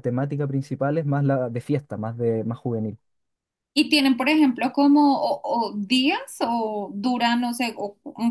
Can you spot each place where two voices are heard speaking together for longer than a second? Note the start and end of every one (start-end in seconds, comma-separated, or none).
none